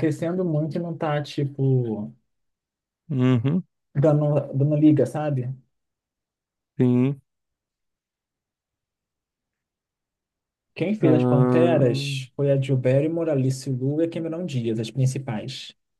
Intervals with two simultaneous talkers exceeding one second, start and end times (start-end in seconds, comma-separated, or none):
11.0-12.3